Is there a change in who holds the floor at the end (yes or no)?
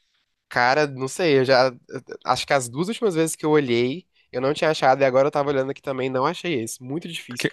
yes